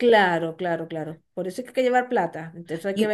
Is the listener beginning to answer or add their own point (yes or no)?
yes